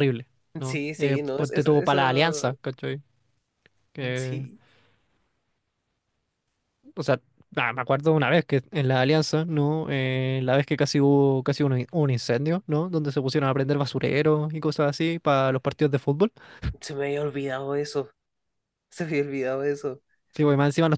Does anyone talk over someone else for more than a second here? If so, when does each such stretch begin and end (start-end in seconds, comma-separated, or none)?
0.6-2.6